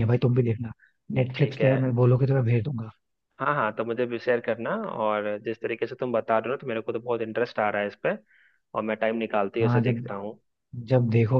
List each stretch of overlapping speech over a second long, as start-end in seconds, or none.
none